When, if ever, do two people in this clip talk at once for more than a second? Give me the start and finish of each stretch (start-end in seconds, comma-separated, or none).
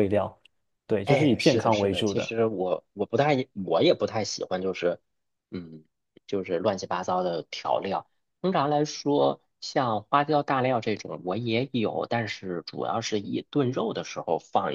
1.0-2.3